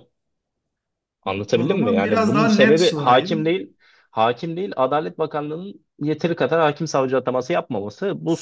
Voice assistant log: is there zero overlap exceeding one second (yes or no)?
no